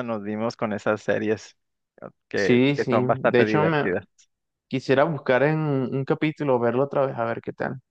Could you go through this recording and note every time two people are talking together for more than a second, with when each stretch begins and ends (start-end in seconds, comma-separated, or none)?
2.3-3.9